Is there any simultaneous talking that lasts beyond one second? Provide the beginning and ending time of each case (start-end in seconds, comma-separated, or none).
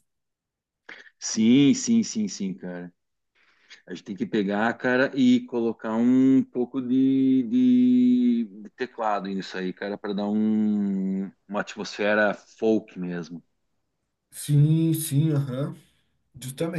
none